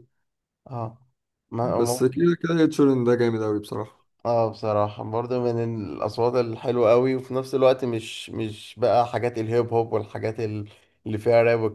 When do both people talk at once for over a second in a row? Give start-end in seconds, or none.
none